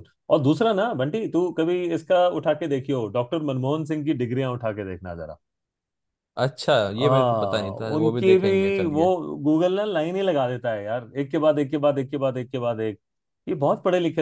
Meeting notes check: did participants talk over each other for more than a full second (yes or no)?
yes